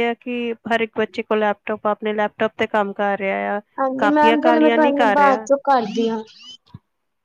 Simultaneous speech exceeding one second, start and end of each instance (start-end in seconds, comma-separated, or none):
4.0-5.5